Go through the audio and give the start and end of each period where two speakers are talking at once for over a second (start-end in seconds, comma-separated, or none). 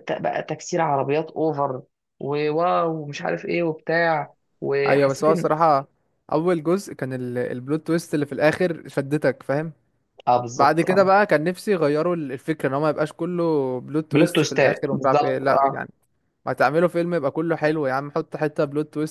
14.1-15.8